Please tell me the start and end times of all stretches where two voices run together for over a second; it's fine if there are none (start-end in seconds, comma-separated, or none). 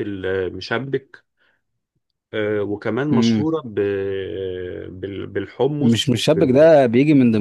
none